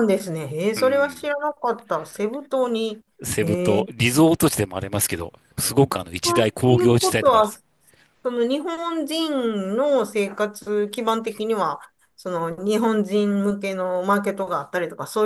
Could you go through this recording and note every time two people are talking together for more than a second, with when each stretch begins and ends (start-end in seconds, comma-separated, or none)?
6.0-7.5